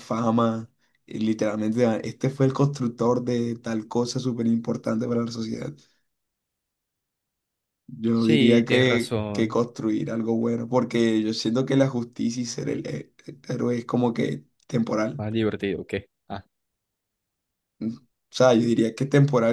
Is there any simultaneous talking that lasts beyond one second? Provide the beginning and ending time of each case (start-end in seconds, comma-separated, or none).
8.2-9.6